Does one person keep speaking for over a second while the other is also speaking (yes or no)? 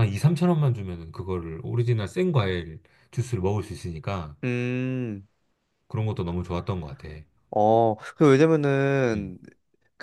no